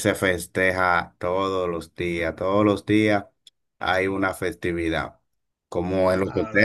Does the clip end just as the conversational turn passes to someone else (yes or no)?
no